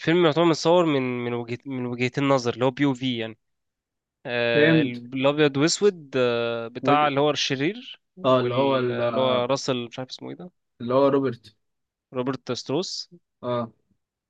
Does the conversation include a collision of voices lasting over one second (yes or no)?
yes